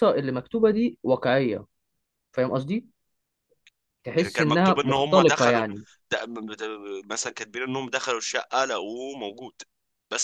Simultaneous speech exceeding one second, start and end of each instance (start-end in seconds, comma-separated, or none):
4.2-5.6